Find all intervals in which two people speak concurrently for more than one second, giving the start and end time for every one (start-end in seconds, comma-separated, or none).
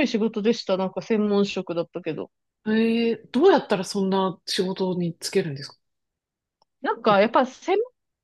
none